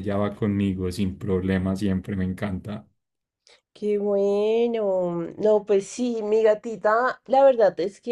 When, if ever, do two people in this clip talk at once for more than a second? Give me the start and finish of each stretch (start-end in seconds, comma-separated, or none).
none